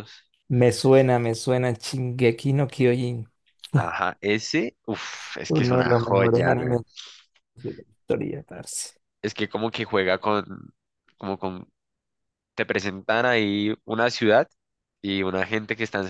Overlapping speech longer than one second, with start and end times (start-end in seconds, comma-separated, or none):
5.5-6.8